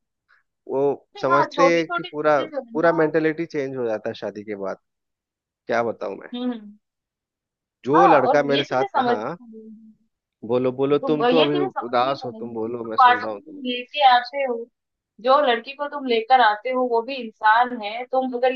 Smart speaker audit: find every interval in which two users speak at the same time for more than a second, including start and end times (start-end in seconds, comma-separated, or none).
1.1-3.1, 8.0-9.2, 11.0-13.6